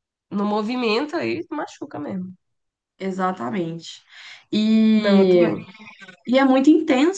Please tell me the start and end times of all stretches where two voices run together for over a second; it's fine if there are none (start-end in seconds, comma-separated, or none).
none